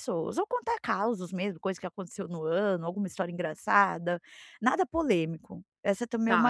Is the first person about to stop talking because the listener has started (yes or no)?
yes